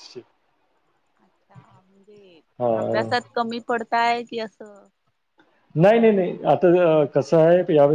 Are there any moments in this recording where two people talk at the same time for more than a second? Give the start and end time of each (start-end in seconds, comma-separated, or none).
none